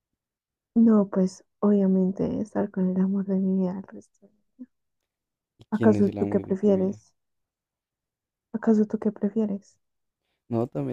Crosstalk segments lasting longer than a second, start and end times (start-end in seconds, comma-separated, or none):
5.7-7.0